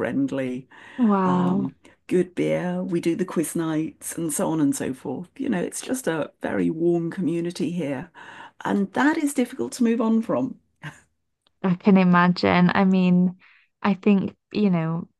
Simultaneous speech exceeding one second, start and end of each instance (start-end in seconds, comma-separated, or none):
none